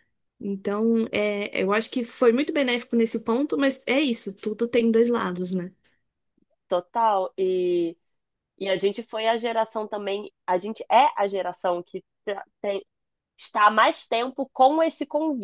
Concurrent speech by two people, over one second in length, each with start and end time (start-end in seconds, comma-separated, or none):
none